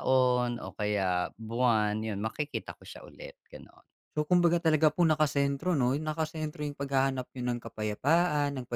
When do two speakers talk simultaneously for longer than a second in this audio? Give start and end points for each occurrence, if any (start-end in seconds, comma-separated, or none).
none